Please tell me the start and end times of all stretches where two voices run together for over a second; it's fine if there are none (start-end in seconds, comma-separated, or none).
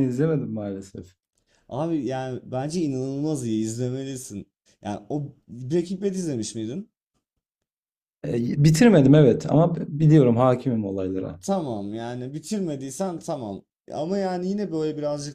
none